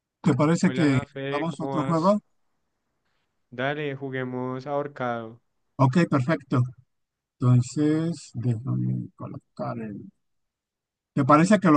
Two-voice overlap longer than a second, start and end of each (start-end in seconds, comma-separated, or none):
0.6-2.2